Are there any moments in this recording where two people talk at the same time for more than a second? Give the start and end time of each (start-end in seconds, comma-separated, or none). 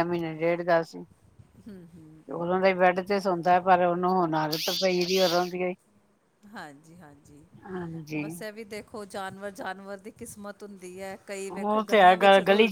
none